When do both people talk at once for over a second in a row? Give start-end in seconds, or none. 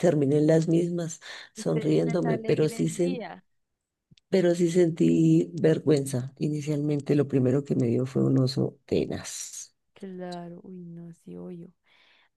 1.6-3.2